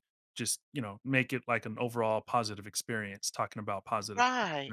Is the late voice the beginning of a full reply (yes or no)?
yes